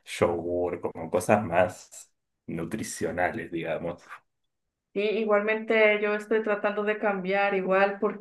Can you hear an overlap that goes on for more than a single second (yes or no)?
no